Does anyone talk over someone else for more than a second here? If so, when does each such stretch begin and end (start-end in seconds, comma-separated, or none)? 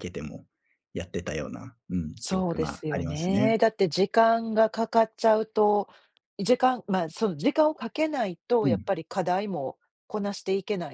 2.2-3.6